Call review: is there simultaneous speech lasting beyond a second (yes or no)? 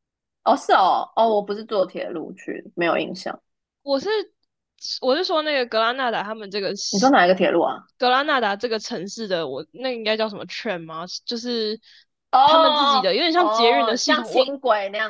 yes